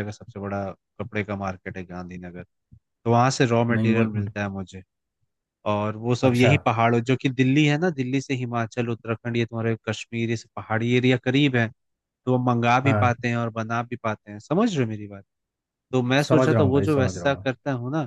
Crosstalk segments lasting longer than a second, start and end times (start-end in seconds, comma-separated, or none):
16.3-17.5